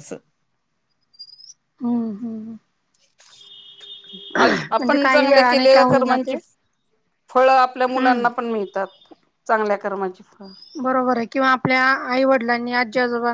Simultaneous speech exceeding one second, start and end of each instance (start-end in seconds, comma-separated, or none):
4.8-6.4